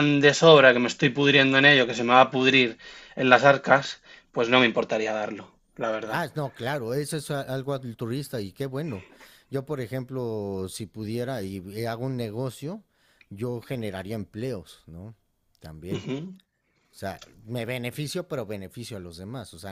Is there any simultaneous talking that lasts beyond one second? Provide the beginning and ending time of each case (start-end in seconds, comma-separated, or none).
none